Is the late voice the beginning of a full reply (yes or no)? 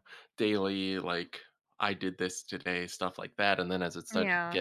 no